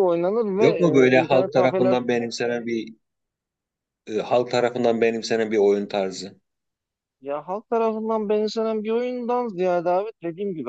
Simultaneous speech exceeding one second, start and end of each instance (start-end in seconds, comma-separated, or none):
0.6-2.0